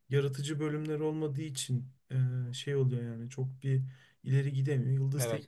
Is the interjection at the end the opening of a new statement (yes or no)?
no